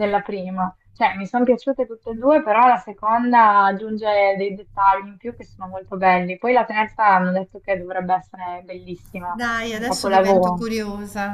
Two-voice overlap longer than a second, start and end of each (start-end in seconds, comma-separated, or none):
9.3-10.7